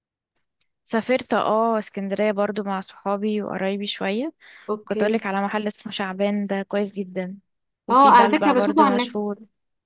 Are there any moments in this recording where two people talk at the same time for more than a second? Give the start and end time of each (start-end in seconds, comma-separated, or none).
7.9-9.2